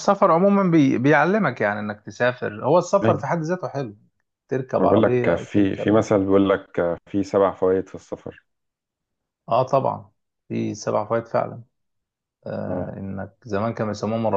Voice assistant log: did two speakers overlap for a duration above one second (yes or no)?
yes